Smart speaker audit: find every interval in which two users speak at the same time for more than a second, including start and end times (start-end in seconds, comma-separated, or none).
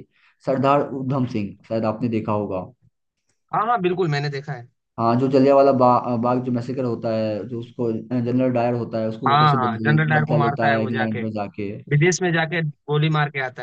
9.3-11.2